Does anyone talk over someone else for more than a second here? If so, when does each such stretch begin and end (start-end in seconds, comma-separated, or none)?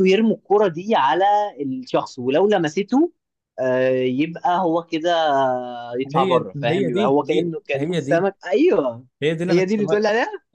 6.2-8.2